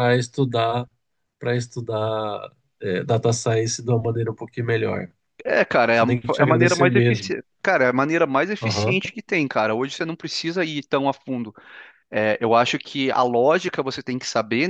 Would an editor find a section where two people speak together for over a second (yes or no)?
yes